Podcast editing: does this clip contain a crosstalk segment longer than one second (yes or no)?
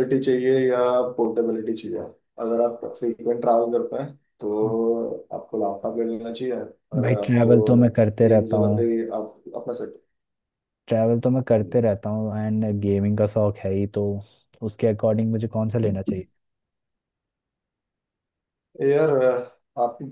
yes